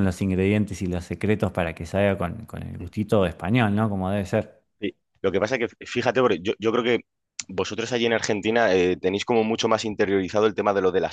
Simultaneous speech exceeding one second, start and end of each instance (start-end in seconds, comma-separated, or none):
none